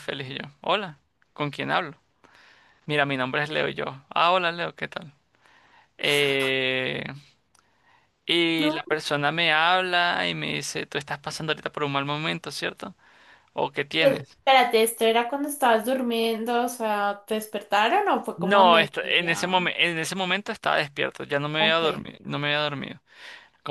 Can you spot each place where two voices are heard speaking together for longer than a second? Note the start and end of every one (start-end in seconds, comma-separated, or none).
18.4-19.6